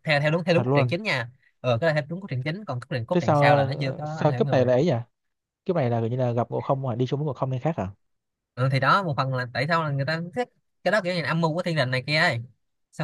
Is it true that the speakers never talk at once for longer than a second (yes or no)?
no